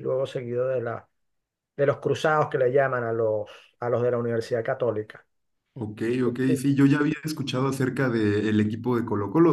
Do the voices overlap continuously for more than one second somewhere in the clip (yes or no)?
no